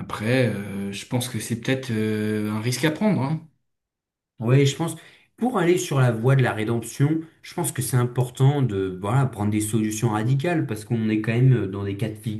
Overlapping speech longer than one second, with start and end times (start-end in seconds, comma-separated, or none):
none